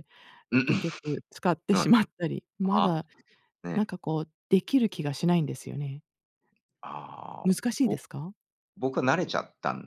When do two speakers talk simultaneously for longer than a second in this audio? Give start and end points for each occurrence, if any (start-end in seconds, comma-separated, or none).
none